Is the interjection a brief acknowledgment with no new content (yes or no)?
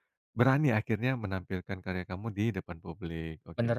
no